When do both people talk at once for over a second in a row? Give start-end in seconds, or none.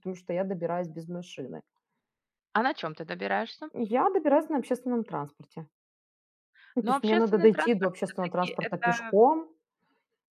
6.8-9.2